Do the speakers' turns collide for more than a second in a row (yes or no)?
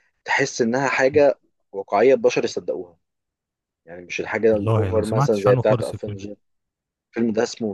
yes